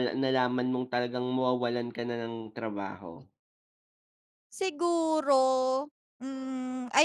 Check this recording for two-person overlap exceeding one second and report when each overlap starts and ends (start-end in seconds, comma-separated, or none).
none